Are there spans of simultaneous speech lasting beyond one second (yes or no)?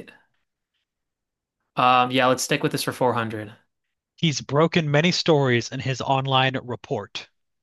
no